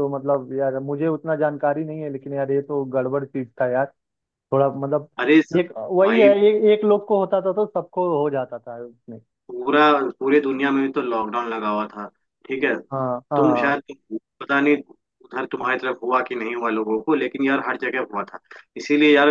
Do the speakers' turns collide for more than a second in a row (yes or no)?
no